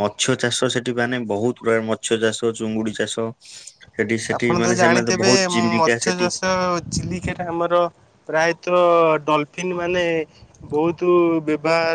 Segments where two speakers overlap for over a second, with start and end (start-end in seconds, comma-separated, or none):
4.4-6.3